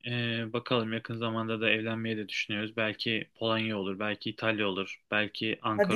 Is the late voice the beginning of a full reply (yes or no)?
yes